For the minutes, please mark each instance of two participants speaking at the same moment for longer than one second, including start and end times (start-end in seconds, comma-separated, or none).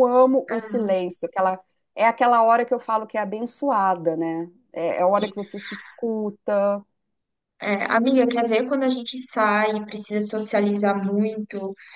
none